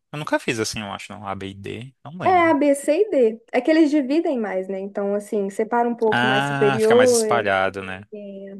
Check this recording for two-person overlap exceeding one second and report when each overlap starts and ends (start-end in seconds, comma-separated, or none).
6.1-7.5